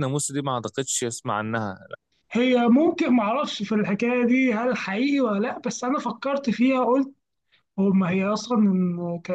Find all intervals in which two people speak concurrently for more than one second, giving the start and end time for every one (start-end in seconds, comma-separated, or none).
none